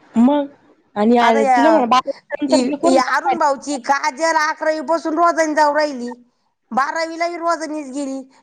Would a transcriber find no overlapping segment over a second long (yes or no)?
no